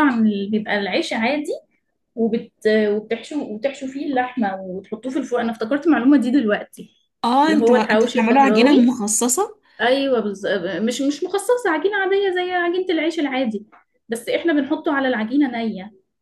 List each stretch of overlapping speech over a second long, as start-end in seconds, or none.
7.4-8.8